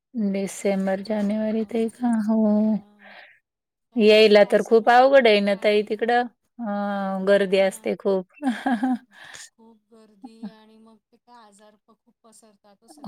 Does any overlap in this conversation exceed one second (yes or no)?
yes